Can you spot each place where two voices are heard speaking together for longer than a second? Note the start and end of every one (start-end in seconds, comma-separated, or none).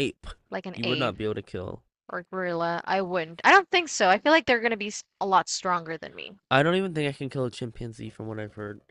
none